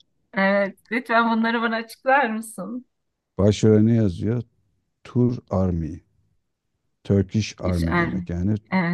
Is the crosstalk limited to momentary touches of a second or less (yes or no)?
yes